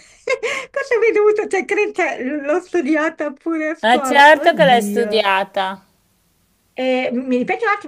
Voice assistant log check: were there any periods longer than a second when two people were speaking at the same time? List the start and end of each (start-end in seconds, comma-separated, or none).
3.8-5.3